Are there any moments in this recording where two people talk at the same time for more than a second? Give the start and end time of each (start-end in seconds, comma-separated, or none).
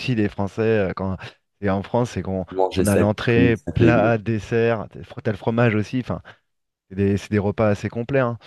2.5-4.1